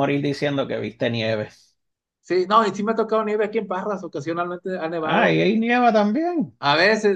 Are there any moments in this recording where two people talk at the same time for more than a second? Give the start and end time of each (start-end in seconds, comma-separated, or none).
none